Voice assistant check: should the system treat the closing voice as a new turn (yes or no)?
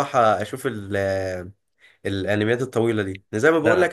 no